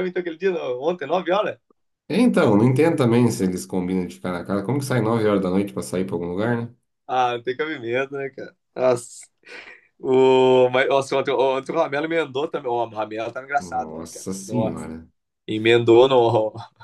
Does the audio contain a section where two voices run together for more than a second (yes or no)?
yes